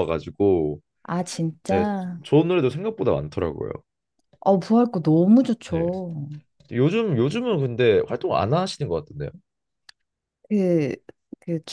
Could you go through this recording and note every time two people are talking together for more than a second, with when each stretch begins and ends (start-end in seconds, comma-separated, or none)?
none